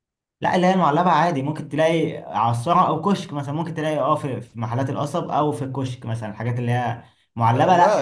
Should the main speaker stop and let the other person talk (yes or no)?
no